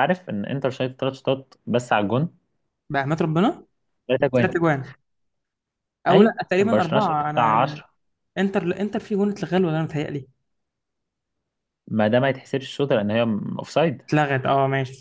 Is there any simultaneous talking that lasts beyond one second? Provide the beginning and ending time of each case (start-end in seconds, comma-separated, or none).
6.1-7.8